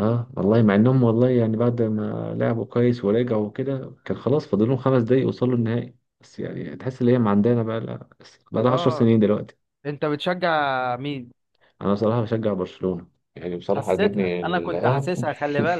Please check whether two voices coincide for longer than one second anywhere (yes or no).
yes